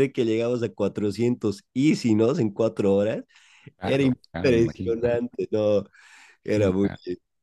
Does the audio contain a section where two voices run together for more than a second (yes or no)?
yes